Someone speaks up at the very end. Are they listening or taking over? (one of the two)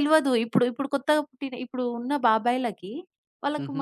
listening